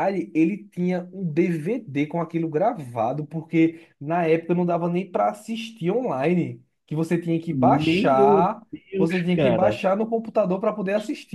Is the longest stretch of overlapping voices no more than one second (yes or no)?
no